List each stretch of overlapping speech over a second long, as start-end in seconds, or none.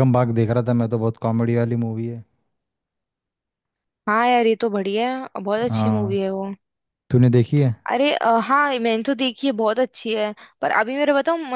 none